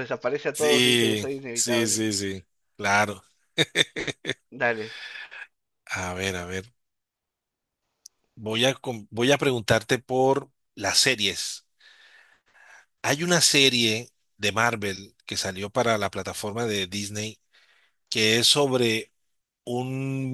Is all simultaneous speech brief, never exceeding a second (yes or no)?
no